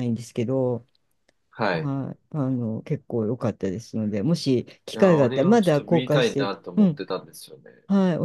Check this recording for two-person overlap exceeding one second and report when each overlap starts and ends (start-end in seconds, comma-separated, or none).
4.9-7.0